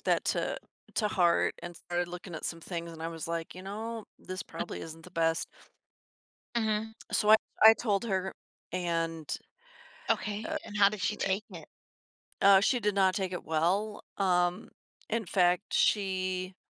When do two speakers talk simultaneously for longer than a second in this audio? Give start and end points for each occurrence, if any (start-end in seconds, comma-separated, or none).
none